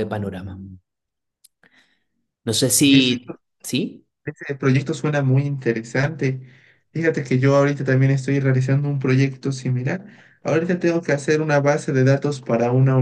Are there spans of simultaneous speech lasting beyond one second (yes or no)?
no